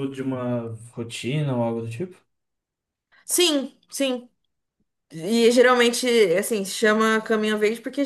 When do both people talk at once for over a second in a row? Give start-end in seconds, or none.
none